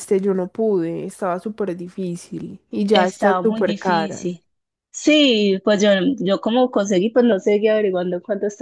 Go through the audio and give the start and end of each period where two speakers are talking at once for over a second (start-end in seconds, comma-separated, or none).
2.9-4.3